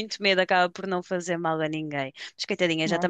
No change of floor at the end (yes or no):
yes